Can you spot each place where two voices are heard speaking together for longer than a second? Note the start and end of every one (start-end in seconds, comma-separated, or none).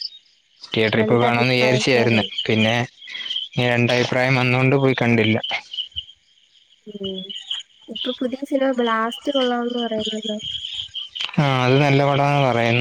1.0-2.3